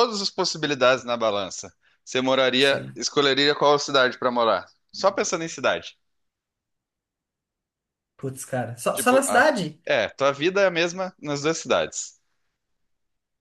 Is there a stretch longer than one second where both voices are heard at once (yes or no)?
no